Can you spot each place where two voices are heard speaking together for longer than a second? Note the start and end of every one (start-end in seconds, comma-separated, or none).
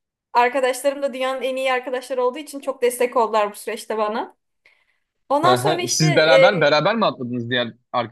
5.4-6.8